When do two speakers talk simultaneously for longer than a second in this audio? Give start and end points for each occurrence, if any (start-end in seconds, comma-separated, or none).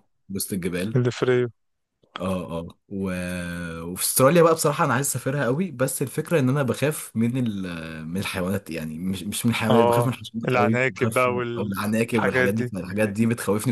9.7-12.7